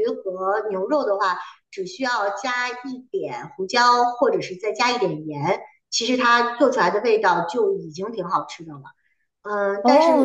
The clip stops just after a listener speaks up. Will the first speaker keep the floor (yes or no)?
no